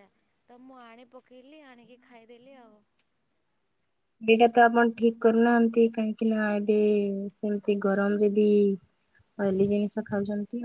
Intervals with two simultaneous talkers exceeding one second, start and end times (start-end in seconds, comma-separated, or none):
none